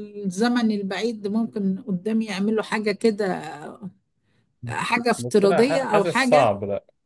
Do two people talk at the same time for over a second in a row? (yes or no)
yes